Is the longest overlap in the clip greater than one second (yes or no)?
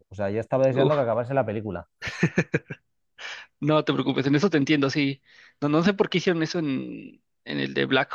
no